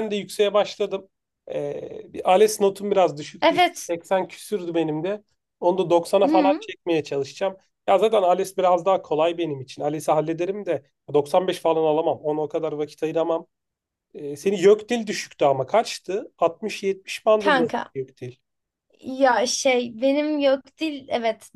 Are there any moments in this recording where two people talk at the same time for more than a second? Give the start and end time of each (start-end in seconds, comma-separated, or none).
none